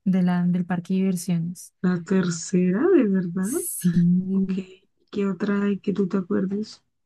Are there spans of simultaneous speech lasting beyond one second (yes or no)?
no